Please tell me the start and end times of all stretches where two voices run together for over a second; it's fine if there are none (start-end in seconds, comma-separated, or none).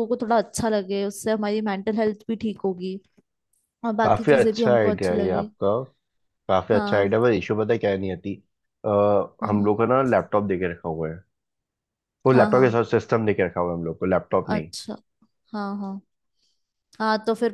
4.0-5.5